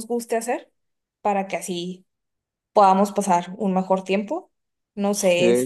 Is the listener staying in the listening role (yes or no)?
yes